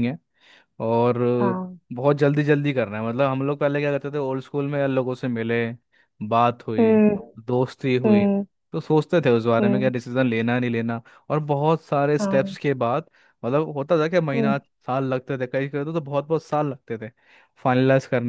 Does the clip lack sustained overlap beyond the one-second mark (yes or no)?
yes